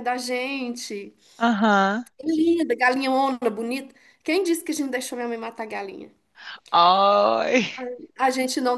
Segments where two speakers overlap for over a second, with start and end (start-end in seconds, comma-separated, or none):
none